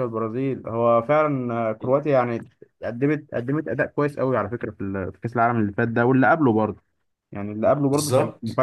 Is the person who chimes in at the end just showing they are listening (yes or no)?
yes